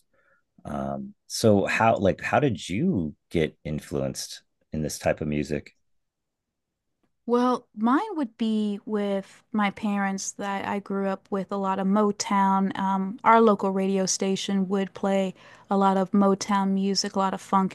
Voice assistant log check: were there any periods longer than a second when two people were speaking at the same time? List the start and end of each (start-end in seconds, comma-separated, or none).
none